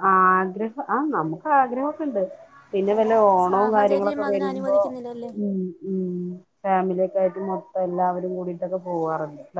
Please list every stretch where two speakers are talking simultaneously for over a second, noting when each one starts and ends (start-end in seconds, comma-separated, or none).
3.5-4.8